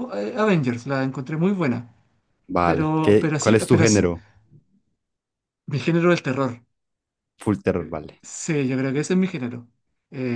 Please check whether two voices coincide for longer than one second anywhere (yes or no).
yes